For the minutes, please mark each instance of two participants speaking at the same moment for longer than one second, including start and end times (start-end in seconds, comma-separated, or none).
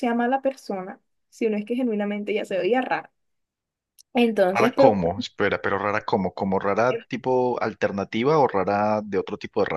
none